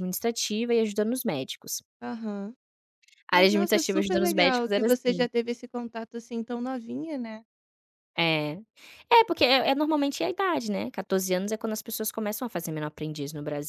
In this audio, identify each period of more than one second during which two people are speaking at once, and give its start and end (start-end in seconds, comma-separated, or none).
3.3-5.3